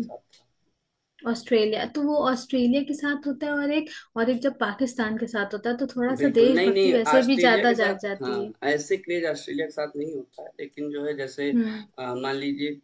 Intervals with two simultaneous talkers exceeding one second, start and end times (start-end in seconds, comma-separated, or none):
6.2-8.5